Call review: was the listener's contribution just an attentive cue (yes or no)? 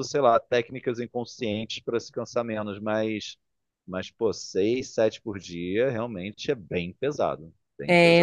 no